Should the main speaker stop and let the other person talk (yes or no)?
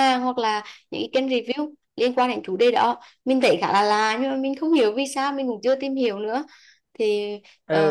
yes